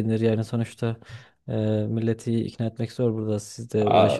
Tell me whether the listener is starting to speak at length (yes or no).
yes